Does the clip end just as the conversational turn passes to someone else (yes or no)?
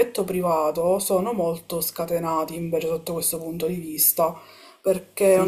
yes